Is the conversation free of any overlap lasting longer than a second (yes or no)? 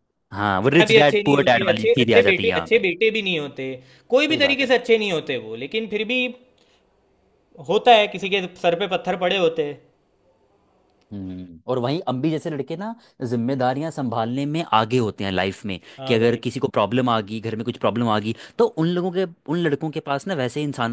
no